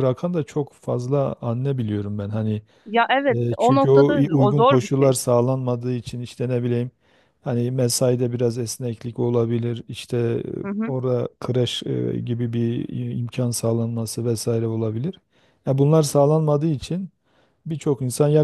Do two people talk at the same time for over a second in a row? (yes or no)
yes